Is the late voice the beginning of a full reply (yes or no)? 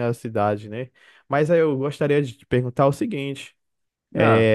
no